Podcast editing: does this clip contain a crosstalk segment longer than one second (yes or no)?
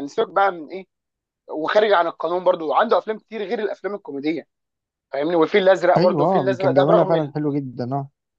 yes